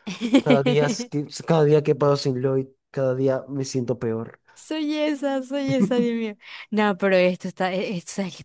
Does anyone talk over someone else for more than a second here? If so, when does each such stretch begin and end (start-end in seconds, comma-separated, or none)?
none